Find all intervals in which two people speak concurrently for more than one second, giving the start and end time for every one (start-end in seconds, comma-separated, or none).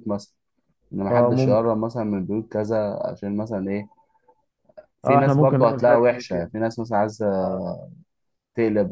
5.0-6.5